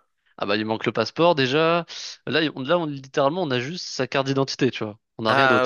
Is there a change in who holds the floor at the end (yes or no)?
yes